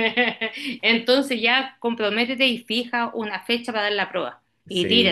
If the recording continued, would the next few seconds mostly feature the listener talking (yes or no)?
yes